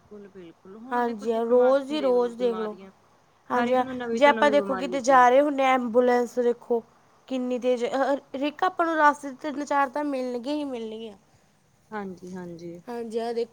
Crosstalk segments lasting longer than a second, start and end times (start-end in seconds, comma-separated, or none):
0.9-2.8, 3.6-5.4